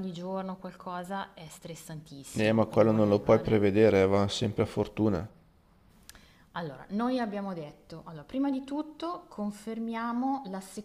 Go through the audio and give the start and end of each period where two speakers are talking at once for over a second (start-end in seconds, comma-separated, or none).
2.3-3.6